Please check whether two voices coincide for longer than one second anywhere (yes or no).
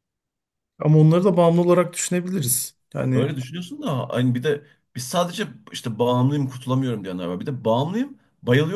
no